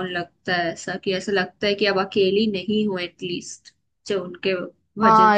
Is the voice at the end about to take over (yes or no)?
yes